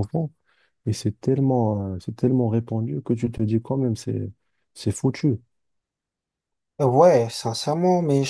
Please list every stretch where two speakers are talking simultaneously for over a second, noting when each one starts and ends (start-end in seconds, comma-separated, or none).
none